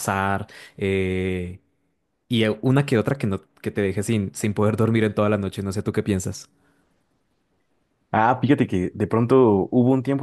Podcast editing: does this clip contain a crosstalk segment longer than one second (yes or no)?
no